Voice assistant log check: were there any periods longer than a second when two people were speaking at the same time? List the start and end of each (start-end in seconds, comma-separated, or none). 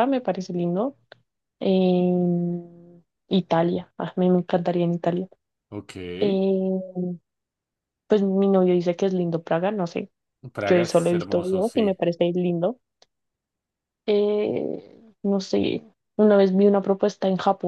10.7-12.0